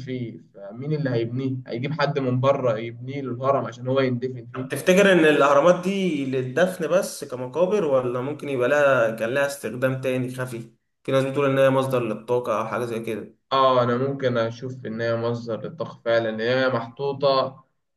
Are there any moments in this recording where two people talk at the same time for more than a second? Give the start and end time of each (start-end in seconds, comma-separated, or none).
none